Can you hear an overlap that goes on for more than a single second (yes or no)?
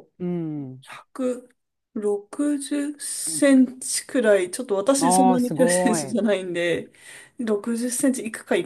yes